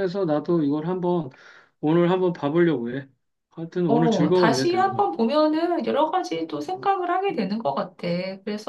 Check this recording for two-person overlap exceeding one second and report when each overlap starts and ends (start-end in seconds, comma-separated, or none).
3.9-5.1